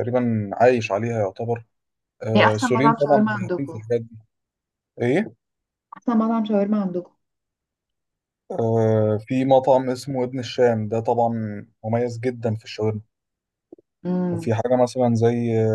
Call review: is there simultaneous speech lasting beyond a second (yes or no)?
yes